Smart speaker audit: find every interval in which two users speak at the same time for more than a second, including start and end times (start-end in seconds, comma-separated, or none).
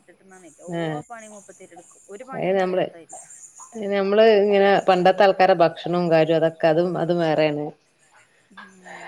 none